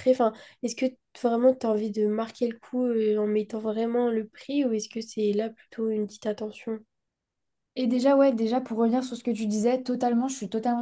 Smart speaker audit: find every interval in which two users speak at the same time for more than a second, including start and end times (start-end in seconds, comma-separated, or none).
none